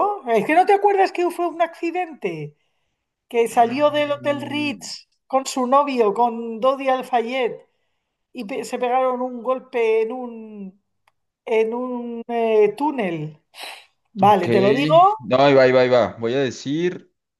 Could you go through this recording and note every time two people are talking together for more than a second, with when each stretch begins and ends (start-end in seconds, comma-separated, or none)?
3.5-4.9